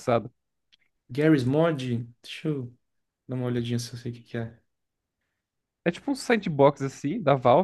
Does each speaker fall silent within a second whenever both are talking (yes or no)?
yes